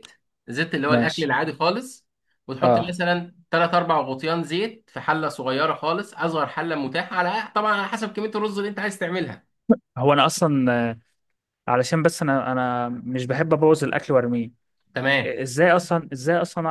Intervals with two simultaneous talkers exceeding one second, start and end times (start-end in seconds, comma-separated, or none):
none